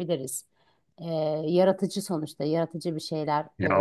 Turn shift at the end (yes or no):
yes